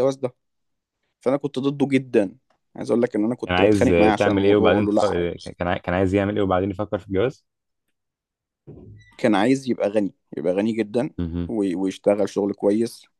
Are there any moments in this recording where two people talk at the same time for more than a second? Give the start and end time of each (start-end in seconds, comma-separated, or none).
3.4-5.3